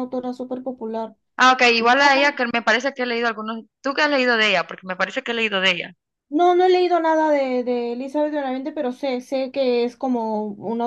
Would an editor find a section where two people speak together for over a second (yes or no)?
no